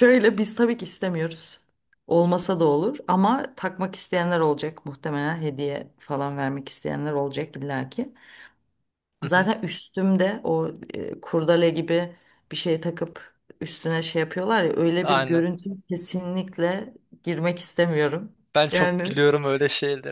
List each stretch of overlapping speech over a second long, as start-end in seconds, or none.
none